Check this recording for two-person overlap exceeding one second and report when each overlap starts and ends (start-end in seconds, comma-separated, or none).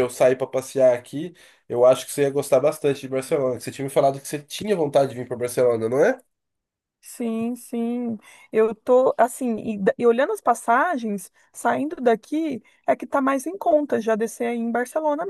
none